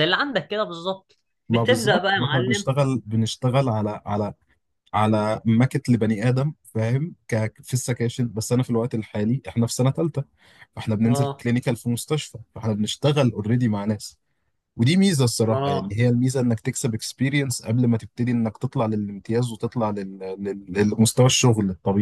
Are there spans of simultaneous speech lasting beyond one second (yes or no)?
yes